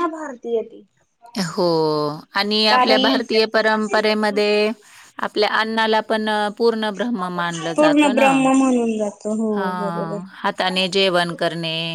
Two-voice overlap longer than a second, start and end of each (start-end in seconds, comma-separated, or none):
none